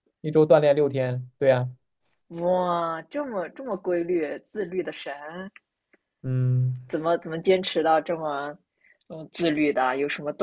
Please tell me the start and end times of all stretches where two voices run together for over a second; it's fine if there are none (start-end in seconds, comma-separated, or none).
none